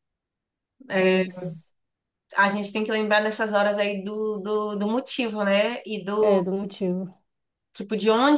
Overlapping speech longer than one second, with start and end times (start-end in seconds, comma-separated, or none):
none